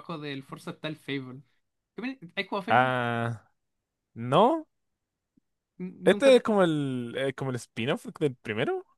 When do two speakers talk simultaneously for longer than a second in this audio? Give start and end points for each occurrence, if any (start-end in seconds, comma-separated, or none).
none